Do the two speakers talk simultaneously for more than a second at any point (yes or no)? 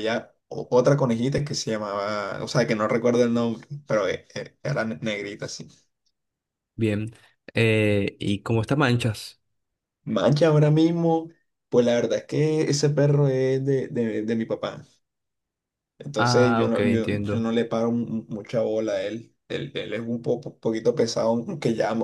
yes